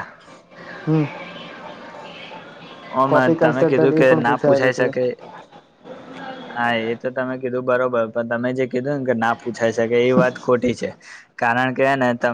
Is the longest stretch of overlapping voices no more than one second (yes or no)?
no